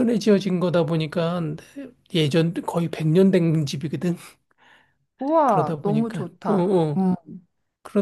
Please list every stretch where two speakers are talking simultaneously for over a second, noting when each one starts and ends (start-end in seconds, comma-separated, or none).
5.5-7.1